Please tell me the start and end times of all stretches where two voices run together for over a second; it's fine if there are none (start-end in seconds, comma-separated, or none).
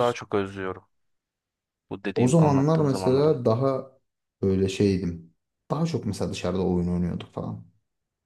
2.1-3.4